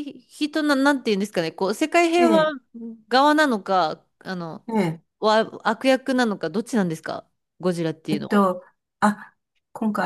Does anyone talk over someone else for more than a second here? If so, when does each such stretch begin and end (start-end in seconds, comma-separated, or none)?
none